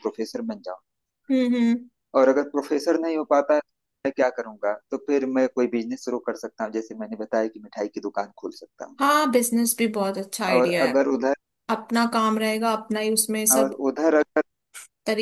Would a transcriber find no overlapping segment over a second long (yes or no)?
yes